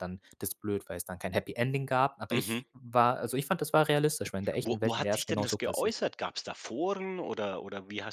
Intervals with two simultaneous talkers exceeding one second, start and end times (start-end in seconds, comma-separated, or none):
4.6-6.0